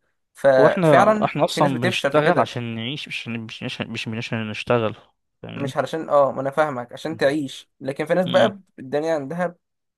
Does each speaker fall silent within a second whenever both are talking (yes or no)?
no